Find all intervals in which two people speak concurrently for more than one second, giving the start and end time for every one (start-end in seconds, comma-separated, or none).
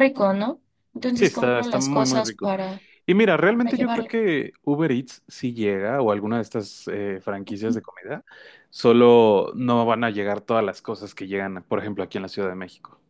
1.1-2.5